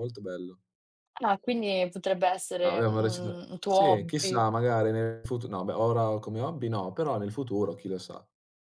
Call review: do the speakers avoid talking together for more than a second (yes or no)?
no